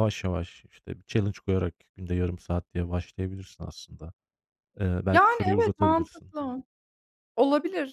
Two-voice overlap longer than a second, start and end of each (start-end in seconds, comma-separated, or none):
5.1-6.3